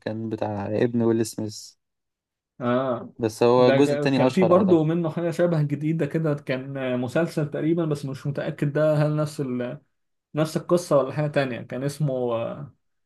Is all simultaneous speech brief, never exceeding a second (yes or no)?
no